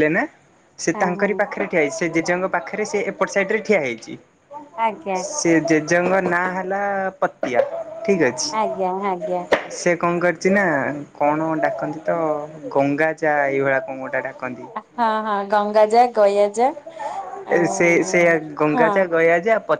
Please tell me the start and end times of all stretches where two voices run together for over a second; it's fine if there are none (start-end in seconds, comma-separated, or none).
none